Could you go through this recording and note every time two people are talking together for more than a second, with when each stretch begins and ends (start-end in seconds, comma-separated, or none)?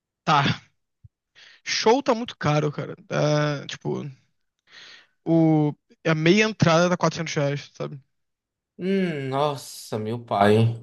none